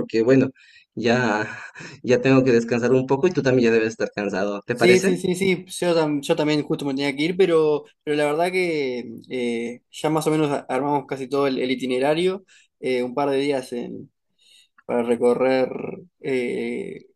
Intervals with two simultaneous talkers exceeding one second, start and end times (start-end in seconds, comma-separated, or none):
none